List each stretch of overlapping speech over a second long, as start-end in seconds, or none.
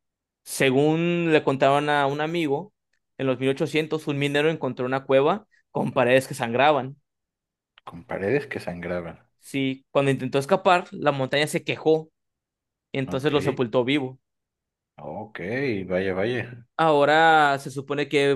none